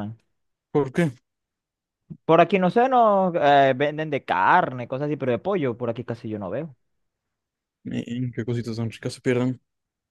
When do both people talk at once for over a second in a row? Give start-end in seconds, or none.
none